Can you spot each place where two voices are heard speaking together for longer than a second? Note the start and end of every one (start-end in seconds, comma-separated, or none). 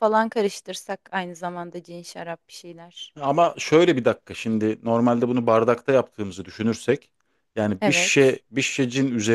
none